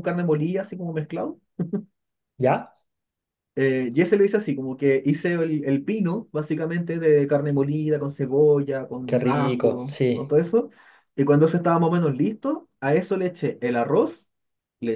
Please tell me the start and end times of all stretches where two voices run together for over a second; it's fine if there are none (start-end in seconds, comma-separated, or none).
9.1-10.3